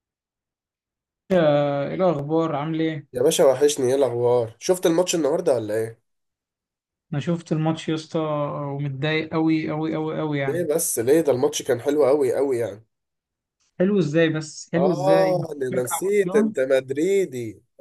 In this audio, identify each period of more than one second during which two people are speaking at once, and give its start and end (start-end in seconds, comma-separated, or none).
14.8-16.5